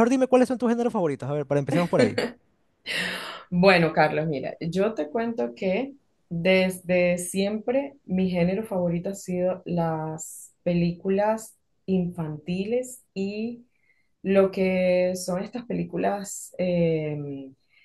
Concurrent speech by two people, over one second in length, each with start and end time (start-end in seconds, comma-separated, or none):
none